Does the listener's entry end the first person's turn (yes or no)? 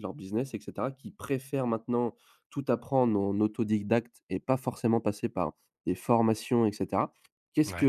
no